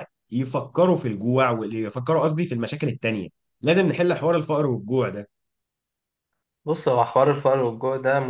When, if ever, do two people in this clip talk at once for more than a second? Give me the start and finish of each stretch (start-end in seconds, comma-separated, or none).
none